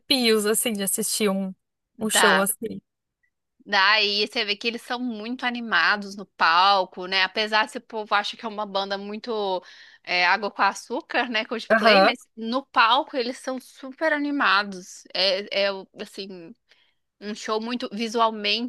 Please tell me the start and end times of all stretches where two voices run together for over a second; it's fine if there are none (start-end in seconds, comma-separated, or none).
none